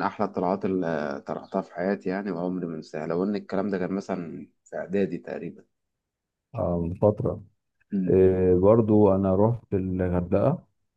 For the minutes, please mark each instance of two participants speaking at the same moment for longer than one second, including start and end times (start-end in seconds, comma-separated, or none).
none